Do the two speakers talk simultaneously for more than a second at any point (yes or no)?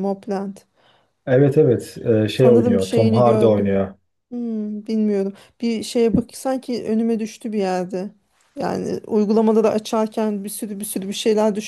yes